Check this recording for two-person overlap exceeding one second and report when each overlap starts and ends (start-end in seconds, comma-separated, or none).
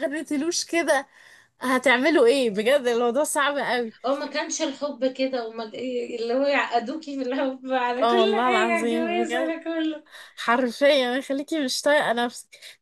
8.0-9.6